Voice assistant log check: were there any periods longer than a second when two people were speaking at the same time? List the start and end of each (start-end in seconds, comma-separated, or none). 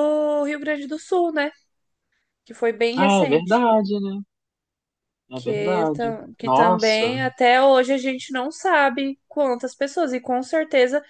5.3-7.2